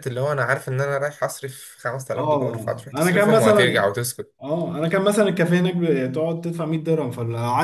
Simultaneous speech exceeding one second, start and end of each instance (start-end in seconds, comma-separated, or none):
2.2-3.9